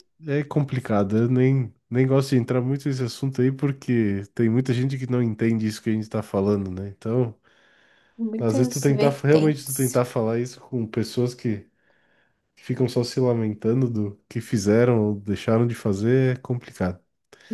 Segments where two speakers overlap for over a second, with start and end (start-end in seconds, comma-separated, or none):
8.4-10.0